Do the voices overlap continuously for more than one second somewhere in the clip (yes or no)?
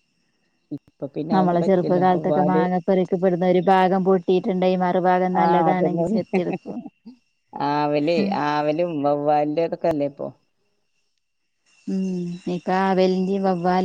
yes